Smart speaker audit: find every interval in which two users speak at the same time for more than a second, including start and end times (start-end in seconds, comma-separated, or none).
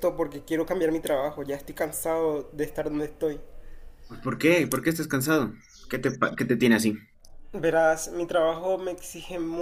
none